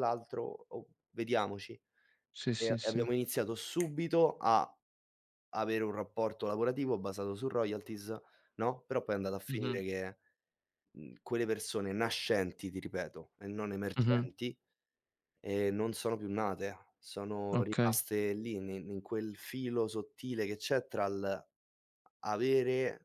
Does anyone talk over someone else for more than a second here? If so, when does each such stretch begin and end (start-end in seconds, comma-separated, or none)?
none